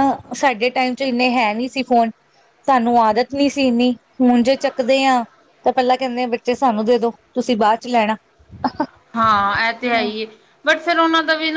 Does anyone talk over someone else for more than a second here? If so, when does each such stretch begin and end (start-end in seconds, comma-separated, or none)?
none